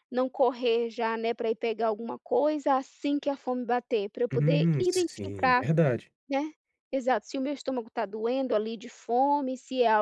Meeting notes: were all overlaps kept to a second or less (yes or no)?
no